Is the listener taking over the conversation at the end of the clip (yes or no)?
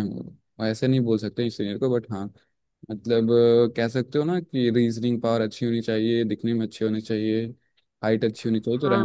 yes